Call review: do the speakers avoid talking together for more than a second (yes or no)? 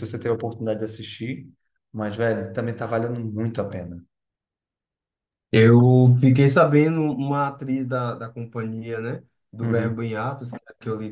yes